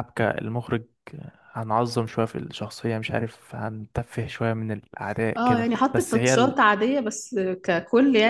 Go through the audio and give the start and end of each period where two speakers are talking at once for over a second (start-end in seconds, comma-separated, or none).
5.4-6.6